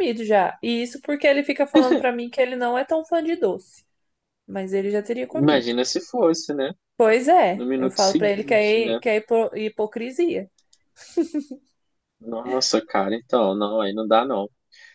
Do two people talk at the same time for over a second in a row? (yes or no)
yes